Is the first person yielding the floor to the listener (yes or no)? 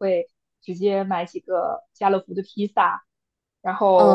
no